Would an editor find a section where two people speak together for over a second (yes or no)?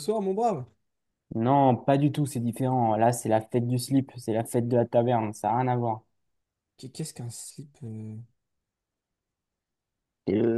no